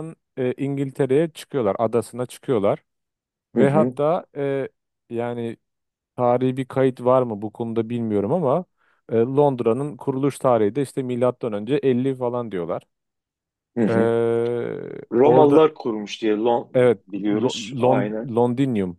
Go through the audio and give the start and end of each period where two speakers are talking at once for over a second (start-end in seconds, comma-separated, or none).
16.7-18.3